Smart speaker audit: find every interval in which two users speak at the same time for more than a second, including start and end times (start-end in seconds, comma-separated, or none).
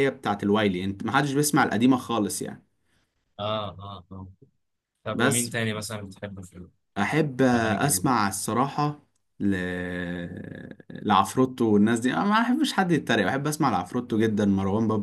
none